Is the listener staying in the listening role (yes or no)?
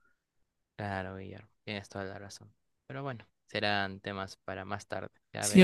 no